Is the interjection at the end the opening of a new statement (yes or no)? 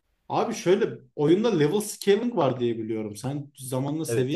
no